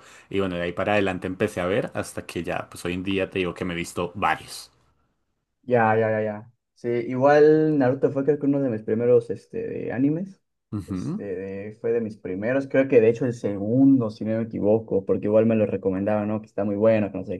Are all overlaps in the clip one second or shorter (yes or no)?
yes